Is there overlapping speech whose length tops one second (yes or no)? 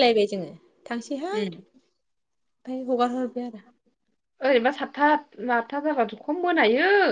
no